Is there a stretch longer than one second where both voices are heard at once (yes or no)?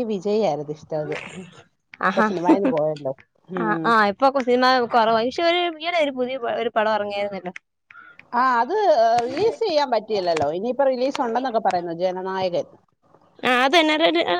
no